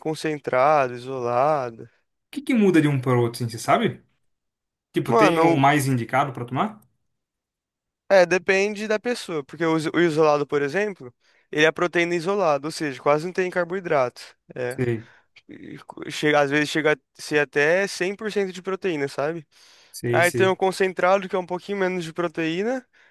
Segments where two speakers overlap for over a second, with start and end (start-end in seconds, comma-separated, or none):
none